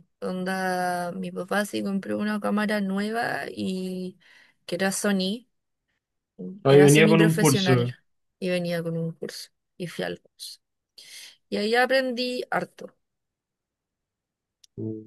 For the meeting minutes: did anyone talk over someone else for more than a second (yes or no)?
yes